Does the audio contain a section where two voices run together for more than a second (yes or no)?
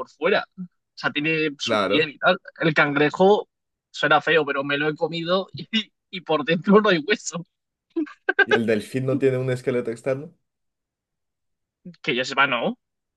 no